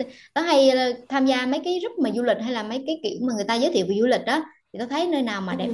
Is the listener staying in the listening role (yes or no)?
yes